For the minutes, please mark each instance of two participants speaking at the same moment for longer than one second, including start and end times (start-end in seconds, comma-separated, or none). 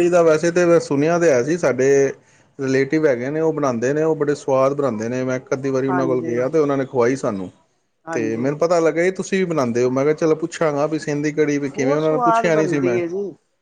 11.1-13.0